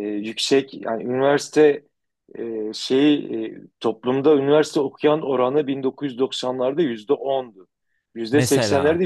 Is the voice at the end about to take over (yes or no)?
no